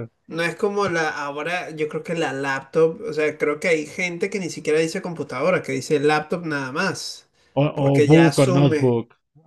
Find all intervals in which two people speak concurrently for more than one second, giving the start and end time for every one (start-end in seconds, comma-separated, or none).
7.7-8.9